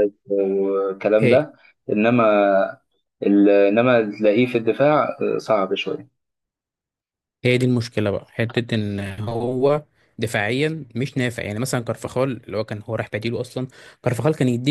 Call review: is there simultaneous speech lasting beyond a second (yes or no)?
no